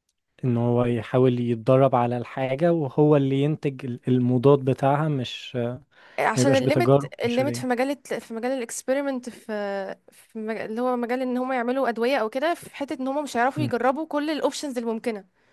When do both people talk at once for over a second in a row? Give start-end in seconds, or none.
6.4-7.6